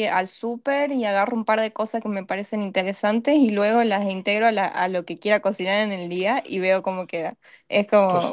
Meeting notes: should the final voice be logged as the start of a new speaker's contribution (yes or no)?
no